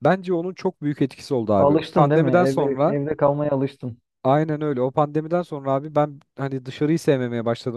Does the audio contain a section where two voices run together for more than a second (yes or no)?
yes